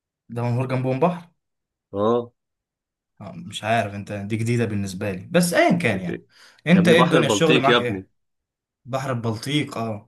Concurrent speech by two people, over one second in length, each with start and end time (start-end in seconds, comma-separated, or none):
6.8-8.1